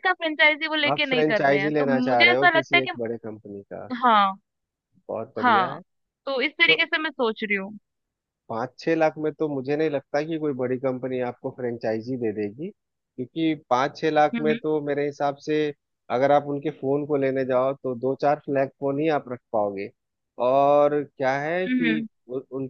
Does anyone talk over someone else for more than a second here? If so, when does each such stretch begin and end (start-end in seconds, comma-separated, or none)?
0.9-2.9